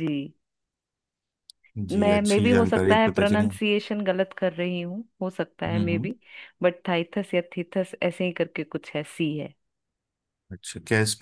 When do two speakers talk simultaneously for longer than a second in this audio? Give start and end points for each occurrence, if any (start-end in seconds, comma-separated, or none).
1.9-3.5